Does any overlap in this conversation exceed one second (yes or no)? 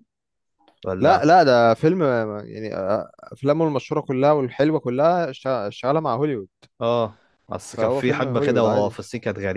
yes